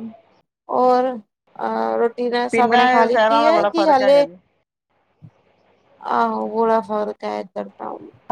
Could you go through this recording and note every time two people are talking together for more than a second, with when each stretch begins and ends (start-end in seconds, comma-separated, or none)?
2.5-4.2